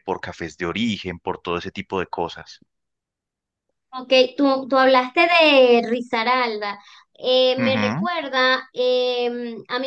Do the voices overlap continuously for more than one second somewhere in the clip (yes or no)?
no